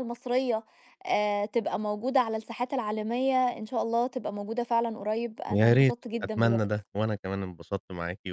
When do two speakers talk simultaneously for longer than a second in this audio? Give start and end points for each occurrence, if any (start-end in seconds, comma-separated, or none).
5.5-6.8